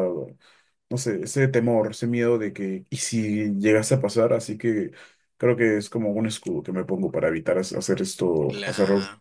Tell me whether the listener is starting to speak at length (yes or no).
no